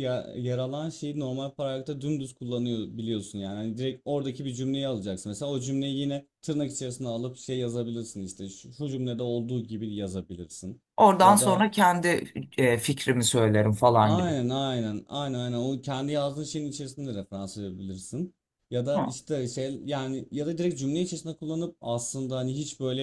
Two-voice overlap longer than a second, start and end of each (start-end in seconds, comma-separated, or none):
none